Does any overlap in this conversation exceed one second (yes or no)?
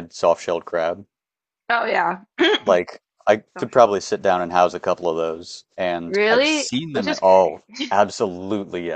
yes